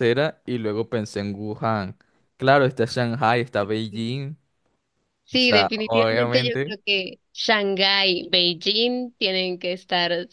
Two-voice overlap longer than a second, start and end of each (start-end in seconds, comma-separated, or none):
5.3-6.8